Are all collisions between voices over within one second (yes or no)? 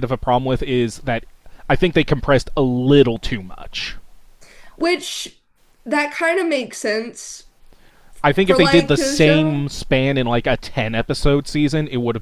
no